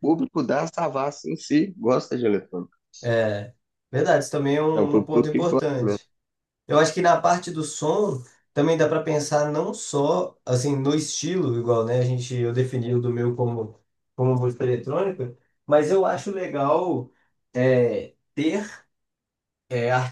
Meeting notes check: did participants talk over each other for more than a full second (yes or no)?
yes